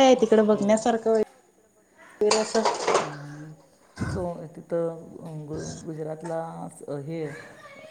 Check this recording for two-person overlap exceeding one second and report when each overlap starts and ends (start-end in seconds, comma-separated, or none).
none